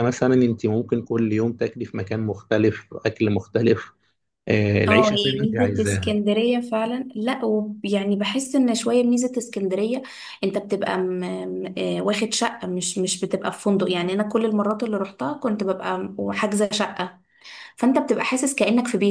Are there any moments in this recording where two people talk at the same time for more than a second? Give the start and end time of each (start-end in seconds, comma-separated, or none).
4.9-6.1